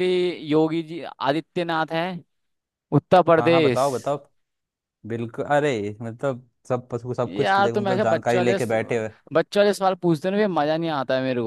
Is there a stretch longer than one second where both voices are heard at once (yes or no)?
yes